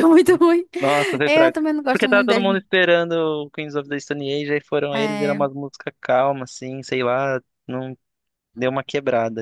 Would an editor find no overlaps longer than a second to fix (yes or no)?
no